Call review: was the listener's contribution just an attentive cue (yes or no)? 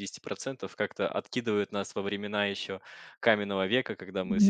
yes